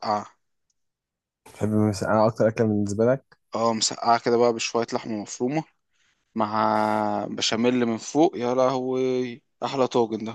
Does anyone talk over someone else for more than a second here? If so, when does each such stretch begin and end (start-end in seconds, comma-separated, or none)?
none